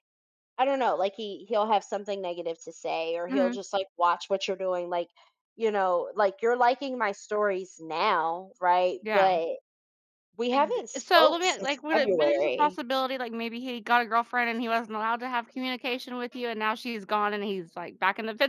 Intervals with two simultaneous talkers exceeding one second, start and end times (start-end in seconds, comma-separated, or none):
10.5-12.8